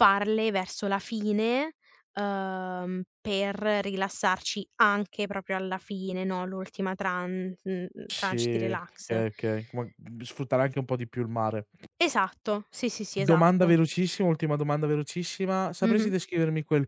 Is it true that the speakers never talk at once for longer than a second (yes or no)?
yes